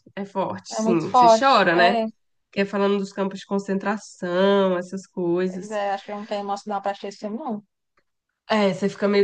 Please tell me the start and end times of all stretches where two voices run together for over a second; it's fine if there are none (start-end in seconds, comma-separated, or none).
0.7-1.9